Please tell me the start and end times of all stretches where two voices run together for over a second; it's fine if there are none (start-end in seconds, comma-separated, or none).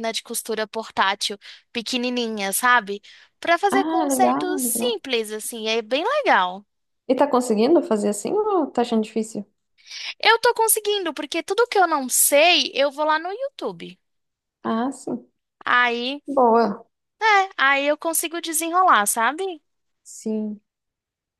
3.7-5.0